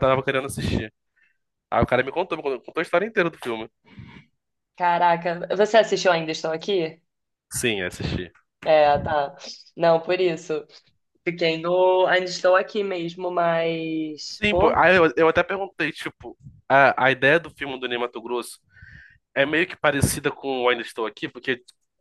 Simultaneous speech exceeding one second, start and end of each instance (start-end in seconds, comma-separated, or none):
none